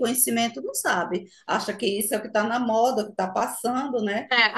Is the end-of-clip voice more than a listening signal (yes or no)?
yes